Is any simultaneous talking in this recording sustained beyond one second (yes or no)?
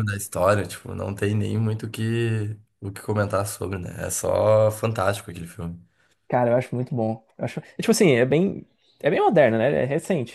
no